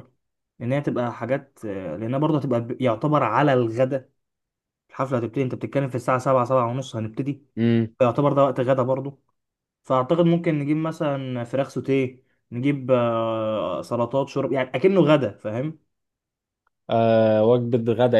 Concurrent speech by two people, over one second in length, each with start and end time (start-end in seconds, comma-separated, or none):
none